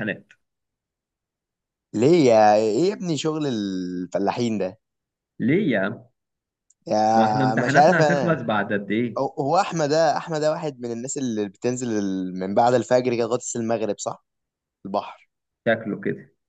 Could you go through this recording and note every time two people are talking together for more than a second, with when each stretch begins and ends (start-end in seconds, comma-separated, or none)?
7.1-8.4